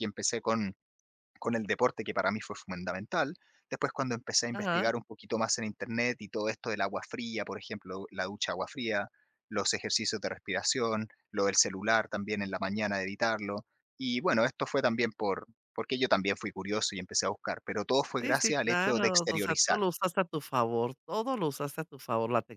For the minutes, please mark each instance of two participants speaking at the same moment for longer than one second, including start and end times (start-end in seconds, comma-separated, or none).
18.2-19.8